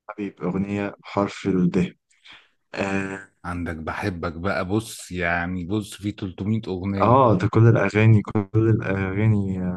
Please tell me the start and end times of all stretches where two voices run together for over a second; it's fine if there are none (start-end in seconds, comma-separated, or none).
none